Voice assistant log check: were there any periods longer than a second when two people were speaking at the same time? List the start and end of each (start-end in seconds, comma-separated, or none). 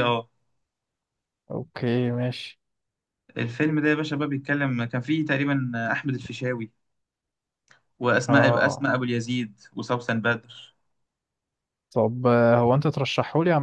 none